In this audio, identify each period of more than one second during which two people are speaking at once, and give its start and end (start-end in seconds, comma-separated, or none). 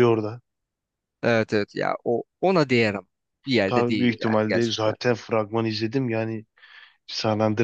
3.7-4.9